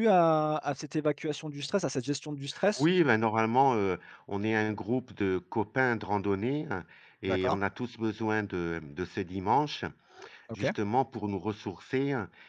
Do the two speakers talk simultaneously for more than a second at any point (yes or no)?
no